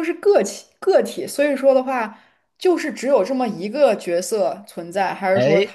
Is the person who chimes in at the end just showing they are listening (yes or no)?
yes